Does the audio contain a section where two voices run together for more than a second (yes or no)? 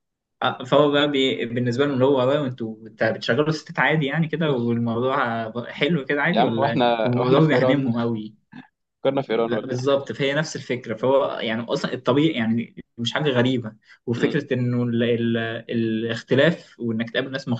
yes